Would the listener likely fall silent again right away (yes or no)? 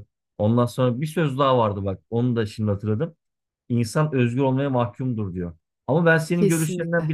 yes